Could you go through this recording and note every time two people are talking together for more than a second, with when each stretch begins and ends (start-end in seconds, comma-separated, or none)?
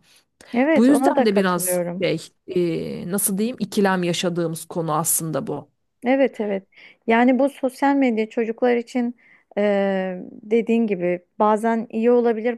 0.8-2.0